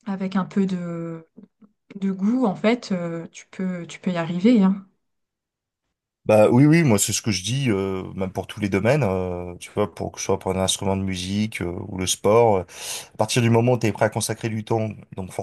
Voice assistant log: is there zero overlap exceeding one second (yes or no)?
yes